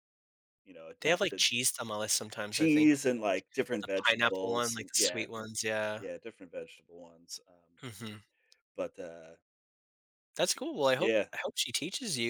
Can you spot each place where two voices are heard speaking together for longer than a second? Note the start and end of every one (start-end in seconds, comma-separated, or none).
3.8-5.2